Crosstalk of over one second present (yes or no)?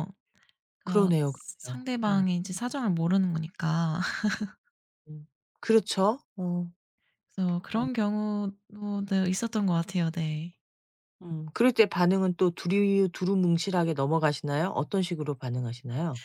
yes